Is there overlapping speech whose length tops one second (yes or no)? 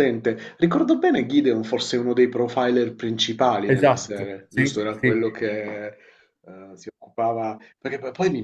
yes